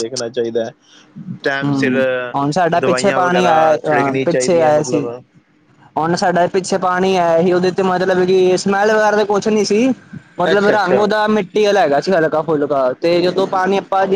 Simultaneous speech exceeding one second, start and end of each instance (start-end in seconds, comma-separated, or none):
2.8-5.1